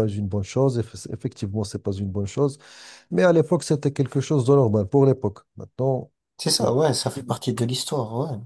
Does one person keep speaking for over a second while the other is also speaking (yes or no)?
no